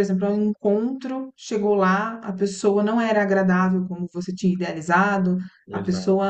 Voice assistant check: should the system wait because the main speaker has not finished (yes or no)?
yes